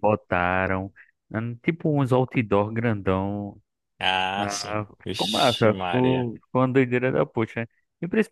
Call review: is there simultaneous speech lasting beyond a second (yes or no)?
yes